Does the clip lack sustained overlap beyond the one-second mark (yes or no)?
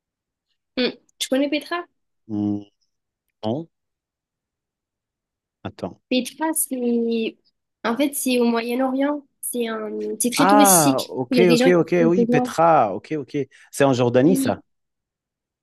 no